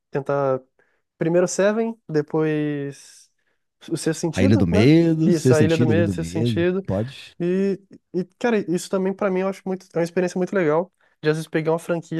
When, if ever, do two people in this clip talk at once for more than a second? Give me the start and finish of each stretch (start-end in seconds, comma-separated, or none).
4.3-6.8